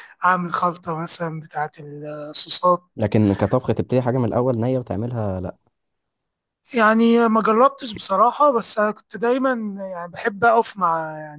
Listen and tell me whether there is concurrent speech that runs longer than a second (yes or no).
no